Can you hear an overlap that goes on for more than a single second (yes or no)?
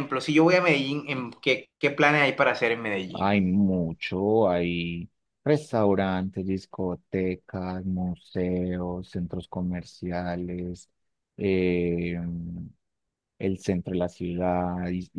no